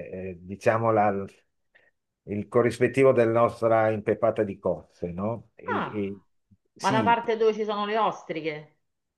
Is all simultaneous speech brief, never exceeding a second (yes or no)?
yes